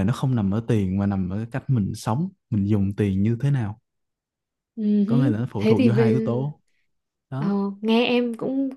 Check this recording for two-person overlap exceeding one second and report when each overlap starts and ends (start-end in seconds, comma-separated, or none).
5.1-6.5